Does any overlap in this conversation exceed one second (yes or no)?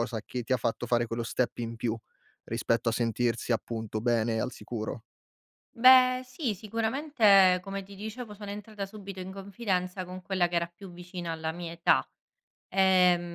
no